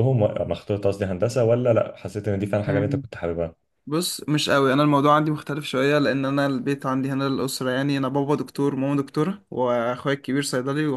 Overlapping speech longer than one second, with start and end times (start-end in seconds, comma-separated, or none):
none